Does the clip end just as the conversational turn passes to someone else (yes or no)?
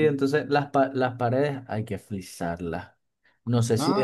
no